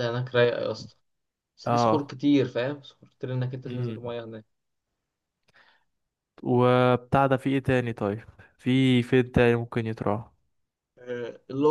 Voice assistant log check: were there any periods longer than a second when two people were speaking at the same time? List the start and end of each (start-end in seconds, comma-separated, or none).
none